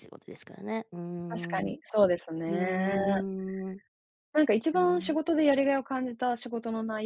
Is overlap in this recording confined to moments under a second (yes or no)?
yes